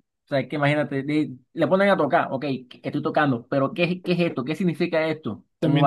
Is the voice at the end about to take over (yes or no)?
yes